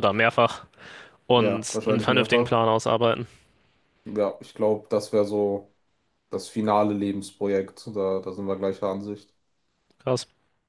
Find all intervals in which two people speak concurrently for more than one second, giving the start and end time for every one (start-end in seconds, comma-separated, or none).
1.4-2.6